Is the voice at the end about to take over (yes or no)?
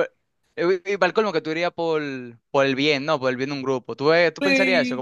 yes